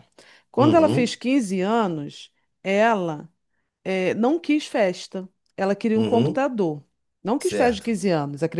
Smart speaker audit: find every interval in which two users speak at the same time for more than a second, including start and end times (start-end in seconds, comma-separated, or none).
none